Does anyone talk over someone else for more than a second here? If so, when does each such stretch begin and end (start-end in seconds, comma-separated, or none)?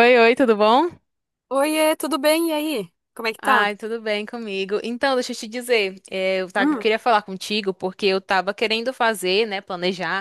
none